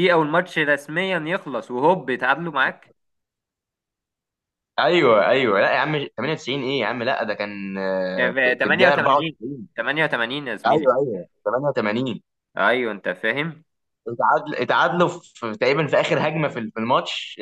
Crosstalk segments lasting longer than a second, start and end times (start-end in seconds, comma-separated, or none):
8.2-9.4